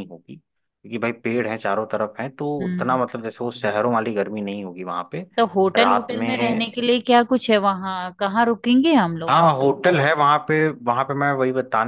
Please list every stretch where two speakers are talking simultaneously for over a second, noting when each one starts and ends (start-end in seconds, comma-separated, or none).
none